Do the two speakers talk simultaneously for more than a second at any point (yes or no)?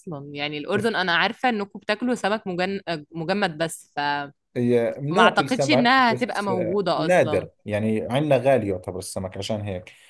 yes